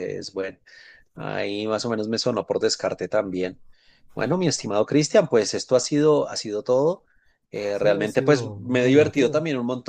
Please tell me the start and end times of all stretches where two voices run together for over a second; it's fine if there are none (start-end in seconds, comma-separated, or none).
7.8-9.4